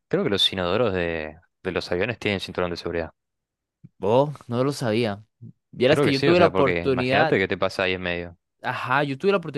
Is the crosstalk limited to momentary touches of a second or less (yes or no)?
no